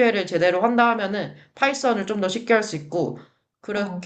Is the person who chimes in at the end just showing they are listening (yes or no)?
yes